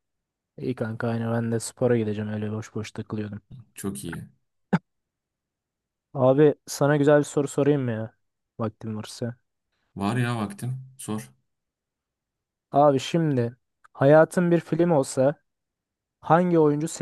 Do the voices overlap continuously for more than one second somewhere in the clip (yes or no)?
no